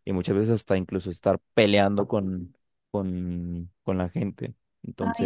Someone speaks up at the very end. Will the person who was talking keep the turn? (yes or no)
no